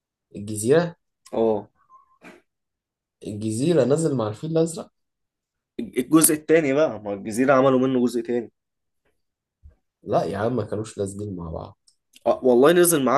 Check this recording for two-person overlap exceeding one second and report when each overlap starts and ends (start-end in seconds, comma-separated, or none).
none